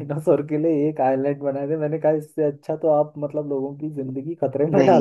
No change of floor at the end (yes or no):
no